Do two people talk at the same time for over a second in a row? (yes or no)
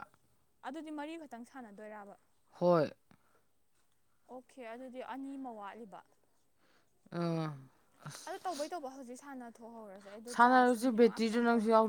no